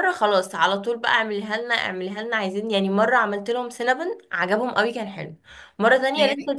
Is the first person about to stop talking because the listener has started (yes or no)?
no